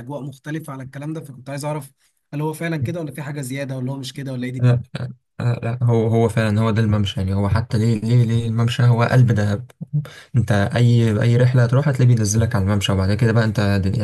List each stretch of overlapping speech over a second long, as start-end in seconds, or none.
none